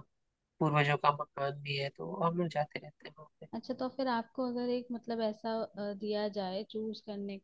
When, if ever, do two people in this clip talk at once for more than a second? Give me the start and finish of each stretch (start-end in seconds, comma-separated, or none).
none